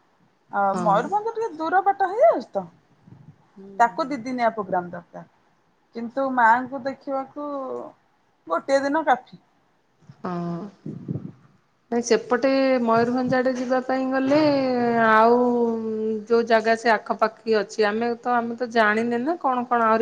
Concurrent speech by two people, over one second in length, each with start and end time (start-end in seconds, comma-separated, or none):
none